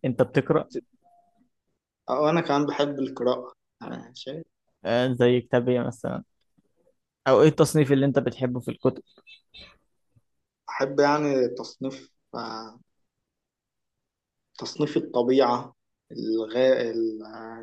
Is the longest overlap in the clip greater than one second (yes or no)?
no